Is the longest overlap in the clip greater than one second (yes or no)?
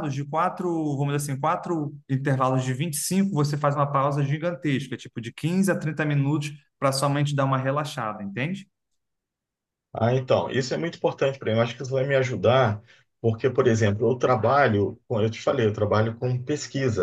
no